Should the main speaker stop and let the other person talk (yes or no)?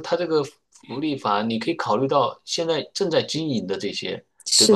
no